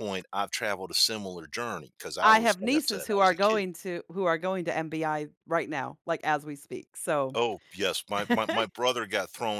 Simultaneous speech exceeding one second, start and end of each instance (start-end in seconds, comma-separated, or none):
2.2-3.6